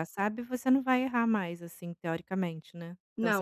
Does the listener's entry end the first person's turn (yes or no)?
yes